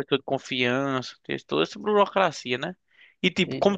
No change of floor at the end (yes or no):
yes